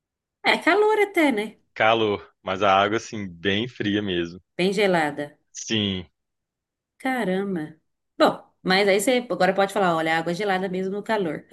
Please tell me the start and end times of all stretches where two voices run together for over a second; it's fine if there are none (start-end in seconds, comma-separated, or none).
none